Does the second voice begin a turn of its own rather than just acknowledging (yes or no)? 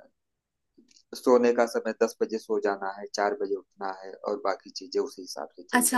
yes